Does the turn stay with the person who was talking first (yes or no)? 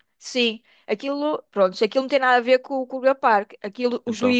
yes